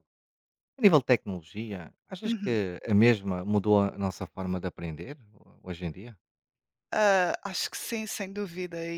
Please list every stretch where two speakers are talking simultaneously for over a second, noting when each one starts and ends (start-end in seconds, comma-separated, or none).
none